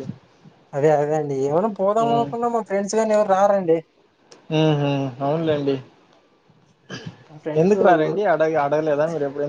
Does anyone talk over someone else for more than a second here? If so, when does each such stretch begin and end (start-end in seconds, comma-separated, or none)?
none